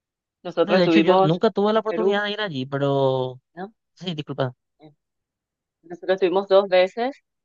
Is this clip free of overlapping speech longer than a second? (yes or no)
no